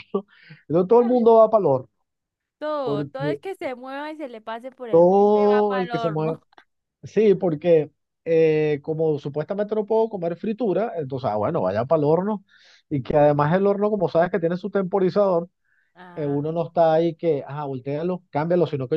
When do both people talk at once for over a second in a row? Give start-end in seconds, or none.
4.9-6.4